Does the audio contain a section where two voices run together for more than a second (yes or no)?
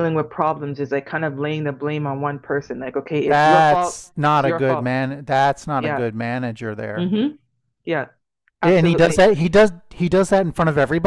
yes